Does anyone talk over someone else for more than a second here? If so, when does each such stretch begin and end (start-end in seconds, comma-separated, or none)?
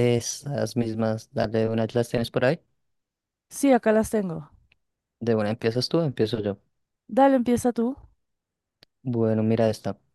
none